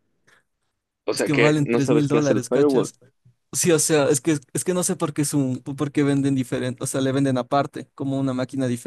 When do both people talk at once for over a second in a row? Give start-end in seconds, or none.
1.1-2.9